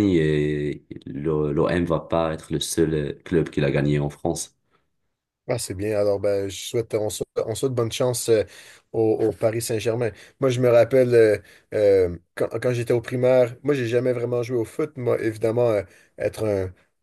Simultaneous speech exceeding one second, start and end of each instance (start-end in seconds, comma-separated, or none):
none